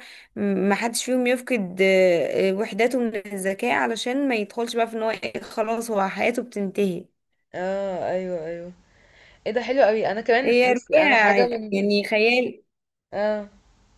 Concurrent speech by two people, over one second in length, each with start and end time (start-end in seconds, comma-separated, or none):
10.4-11.9